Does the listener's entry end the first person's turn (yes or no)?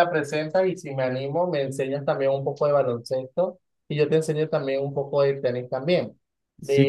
yes